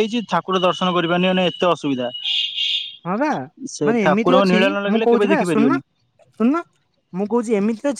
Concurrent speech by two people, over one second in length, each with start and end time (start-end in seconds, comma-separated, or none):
3.9-5.8